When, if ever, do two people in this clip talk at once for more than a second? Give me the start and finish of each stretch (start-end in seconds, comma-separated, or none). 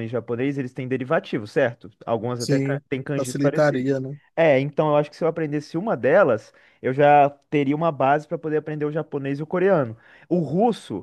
2.4-3.9